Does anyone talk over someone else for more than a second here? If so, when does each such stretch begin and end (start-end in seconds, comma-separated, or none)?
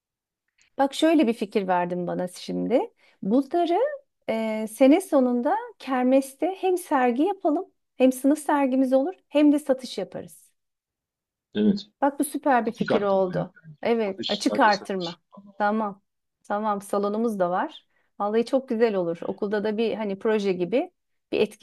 12.7-15.2